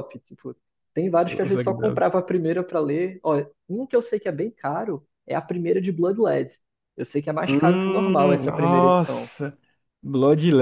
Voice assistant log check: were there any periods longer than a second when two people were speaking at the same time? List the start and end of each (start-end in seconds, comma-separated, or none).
7.5-9.3